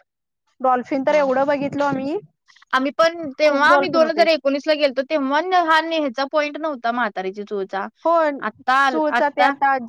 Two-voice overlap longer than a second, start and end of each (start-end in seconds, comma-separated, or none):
none